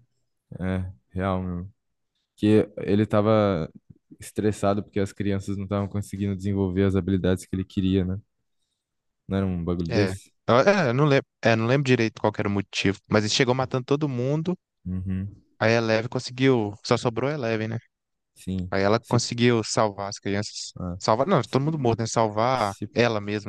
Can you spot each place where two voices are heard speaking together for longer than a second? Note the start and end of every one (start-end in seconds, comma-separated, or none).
none